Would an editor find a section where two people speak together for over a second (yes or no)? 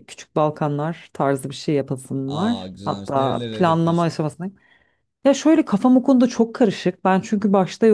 yes